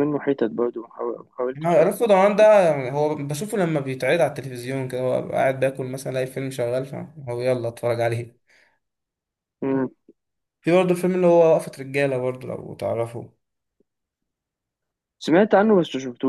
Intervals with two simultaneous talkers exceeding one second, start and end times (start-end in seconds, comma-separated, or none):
none